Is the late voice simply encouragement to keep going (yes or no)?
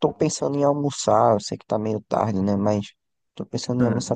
yes